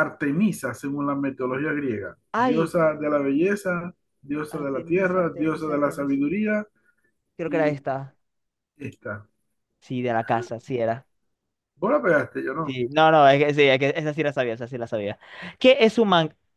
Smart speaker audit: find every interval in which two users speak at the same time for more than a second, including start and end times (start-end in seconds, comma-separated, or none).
4.6-6.2